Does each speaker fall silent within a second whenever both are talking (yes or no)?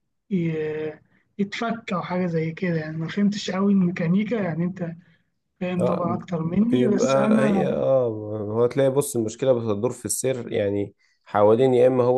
no